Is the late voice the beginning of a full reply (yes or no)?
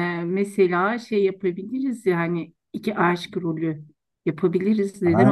yes